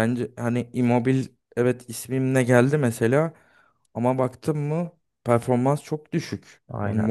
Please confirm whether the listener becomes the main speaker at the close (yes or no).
no